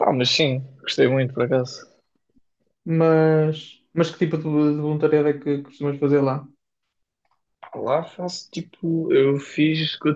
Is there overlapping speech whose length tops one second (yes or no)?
no